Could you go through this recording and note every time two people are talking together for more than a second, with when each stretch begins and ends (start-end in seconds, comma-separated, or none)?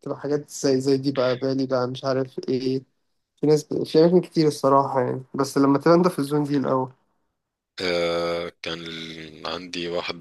none